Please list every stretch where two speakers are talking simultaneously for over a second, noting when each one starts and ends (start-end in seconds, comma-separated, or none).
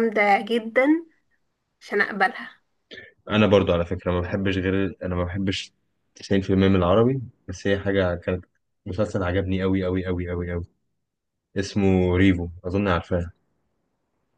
none